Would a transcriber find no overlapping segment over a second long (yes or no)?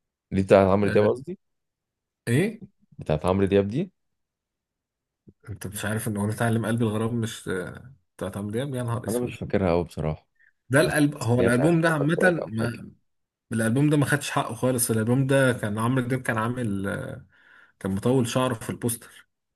no